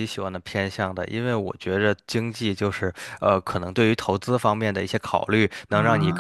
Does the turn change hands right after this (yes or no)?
no